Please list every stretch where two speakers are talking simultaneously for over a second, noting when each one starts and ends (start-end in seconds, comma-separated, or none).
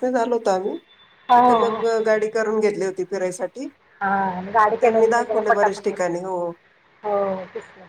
4.7-6.1